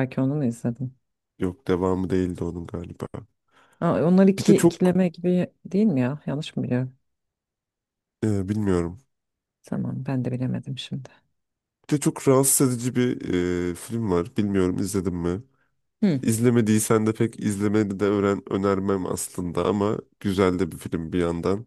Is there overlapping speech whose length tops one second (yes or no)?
no